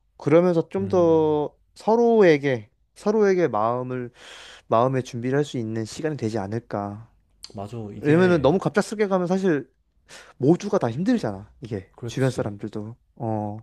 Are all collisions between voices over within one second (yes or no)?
yes